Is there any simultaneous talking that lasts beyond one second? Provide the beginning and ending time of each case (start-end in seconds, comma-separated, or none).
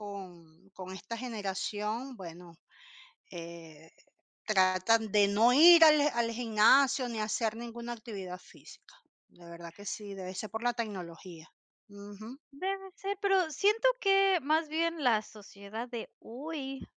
none